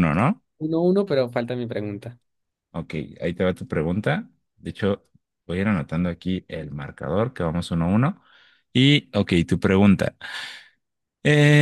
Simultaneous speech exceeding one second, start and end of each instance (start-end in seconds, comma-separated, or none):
none